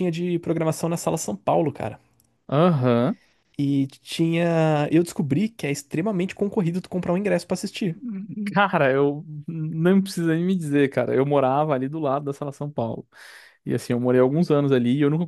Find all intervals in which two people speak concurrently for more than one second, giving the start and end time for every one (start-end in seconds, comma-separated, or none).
none